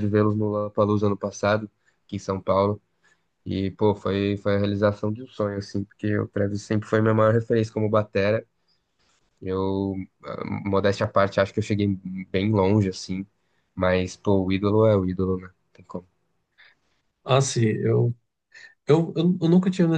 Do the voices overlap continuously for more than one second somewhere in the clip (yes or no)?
no